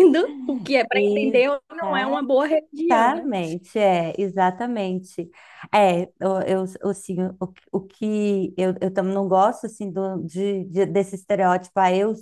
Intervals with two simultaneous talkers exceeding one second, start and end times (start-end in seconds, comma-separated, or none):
0.9-2.3